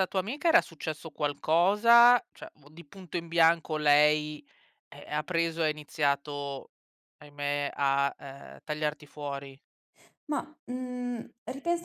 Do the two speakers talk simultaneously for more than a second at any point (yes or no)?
no